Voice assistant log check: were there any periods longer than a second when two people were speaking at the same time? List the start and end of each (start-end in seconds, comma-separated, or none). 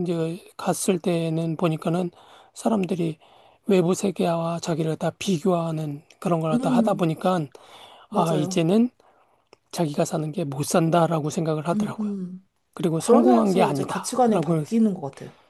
13.0-14.6